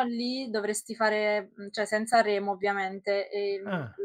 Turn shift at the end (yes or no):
no